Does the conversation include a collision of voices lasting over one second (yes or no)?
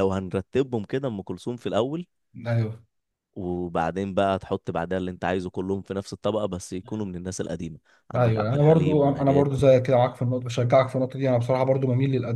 yes